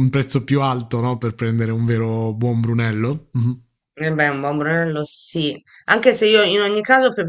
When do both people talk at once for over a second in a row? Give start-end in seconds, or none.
none